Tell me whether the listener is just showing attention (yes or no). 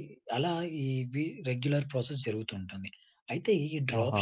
yes